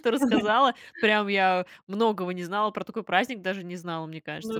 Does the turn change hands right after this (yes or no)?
no